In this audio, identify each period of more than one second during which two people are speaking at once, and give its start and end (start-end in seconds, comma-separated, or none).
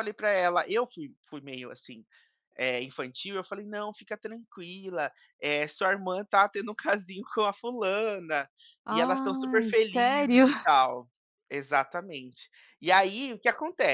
8.9-10.5